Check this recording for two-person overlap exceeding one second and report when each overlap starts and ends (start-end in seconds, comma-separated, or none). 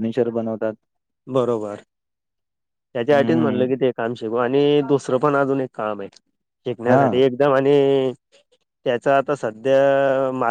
none